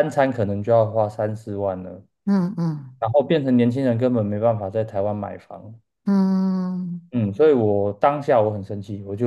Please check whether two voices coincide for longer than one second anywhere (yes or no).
no